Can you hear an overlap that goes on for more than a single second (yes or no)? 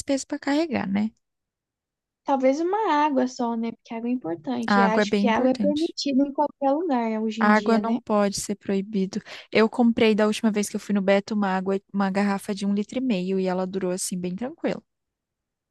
yes